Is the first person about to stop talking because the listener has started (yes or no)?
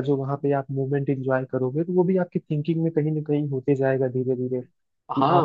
yes